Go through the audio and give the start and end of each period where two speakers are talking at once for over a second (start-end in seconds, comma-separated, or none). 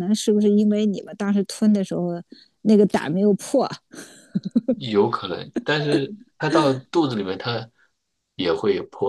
none